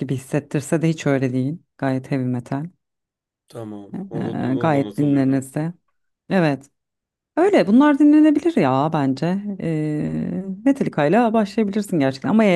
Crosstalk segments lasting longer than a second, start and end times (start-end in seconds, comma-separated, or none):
3.9-5.5